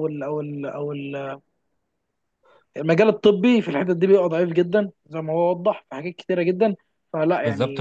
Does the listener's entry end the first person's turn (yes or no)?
yes